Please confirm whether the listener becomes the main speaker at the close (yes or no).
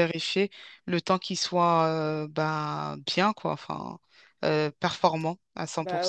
yes